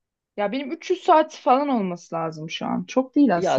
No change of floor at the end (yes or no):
no